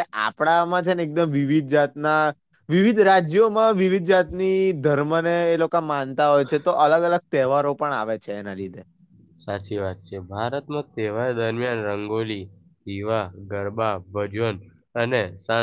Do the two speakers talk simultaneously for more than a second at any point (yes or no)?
no